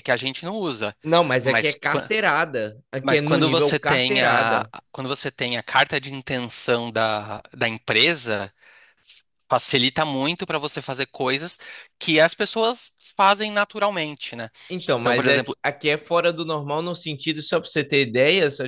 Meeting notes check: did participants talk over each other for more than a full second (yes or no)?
yes